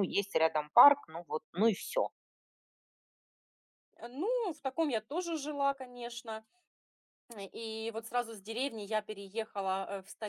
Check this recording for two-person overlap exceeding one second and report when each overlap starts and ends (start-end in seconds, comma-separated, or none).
none